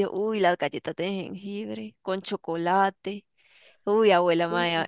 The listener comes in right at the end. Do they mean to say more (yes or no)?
no